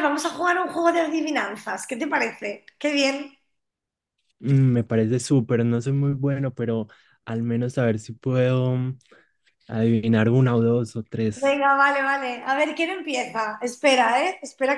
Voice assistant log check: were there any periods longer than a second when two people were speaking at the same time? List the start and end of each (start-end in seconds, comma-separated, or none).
none